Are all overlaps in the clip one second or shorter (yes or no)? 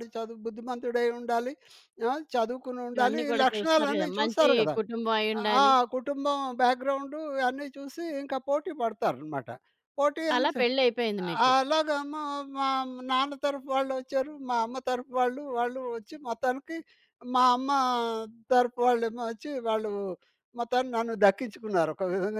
no